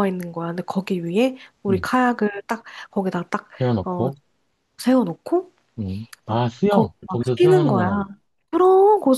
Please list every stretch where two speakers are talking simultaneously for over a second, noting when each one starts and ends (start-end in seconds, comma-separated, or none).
6.2-7.9